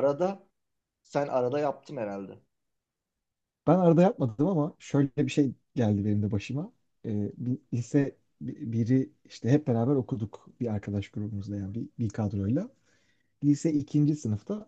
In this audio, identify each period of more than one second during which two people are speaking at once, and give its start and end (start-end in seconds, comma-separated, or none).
none